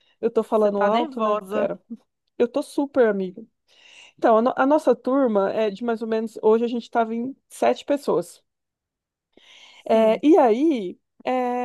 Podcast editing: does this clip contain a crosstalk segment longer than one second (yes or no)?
yes